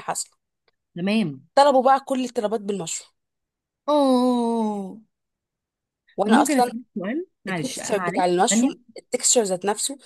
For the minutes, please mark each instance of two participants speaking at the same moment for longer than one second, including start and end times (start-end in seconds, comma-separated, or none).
7.5-8.8